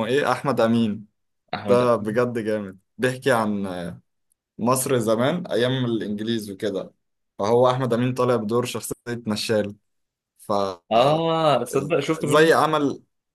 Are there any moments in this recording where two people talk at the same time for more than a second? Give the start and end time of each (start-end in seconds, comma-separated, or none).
none